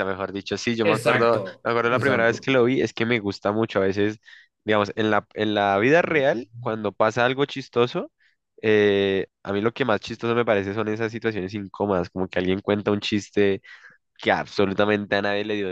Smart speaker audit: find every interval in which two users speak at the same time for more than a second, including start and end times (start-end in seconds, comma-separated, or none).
0.8-2.5